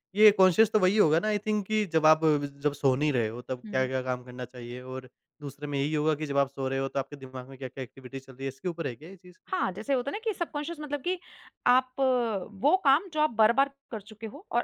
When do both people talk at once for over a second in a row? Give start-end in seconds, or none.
none